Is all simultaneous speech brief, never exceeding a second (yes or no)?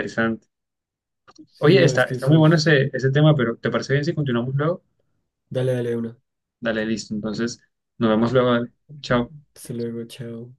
no